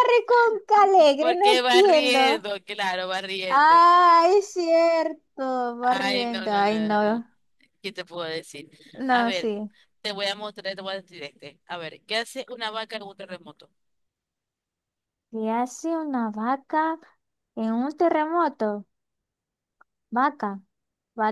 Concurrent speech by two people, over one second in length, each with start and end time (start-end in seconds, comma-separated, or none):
1.2-2.5, 5.8-7.2